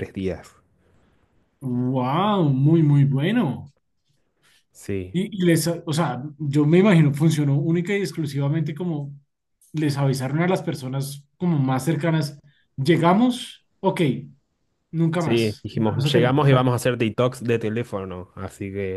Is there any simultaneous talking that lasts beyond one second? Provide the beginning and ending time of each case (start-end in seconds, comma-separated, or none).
15.2-16.7